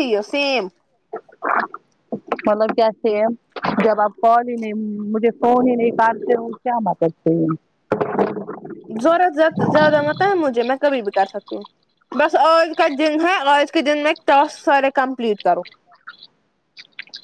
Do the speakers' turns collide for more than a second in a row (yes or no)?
no